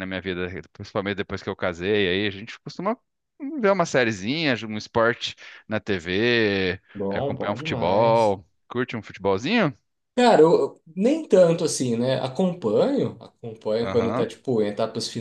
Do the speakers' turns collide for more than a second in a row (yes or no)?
yes